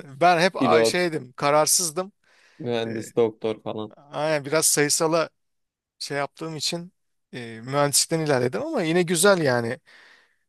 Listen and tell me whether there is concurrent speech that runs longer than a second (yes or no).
no